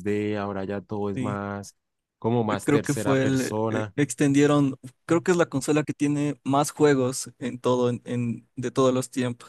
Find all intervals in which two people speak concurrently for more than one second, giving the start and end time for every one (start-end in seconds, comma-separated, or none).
2.5-3.9